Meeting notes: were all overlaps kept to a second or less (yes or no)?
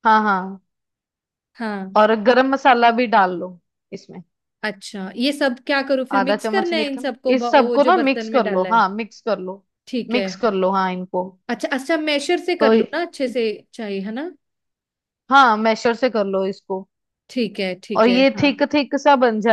no